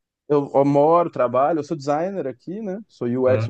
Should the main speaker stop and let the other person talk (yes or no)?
no